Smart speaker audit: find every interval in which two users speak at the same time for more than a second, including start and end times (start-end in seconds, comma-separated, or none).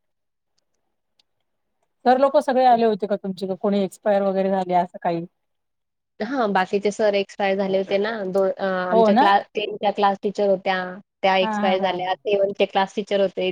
none